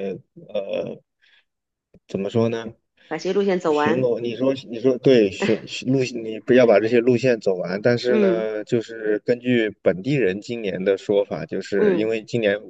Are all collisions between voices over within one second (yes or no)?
yes